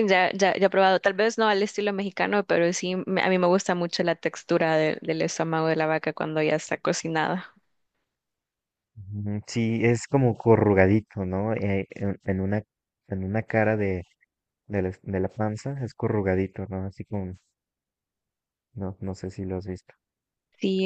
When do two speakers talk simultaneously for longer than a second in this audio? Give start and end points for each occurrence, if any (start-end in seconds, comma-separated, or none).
none